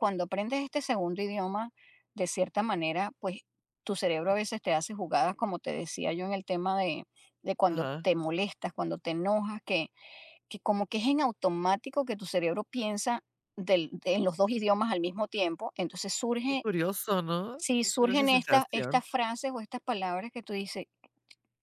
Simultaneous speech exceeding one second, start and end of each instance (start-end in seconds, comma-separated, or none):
17.6-19.0